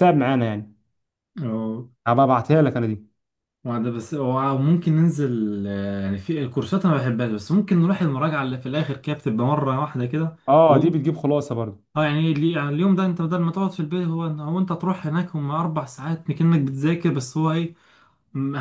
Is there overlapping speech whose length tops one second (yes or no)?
no